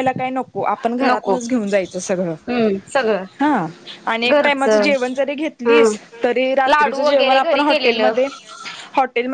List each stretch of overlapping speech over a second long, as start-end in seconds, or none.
6.7-8.1